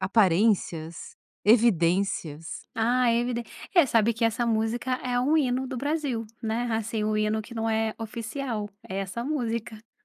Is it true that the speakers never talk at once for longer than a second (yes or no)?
yes